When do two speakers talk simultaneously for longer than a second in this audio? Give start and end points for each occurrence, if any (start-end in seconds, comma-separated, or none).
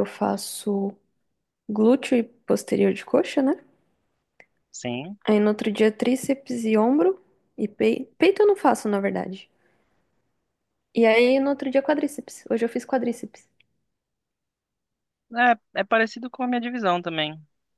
none